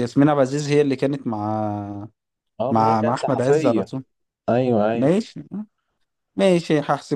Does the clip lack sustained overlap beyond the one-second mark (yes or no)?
no